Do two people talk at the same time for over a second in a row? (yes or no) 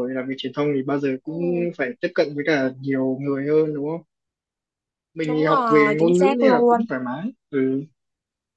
yes